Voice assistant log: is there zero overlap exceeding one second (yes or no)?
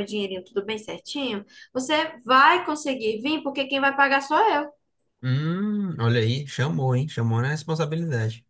yes